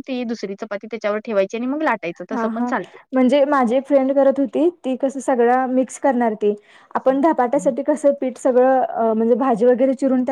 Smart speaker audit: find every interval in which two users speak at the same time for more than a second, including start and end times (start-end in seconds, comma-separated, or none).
none